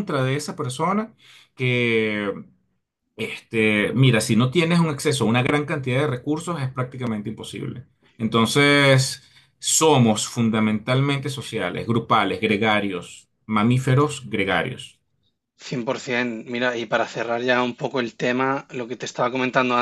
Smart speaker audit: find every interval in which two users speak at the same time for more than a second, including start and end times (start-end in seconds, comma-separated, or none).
none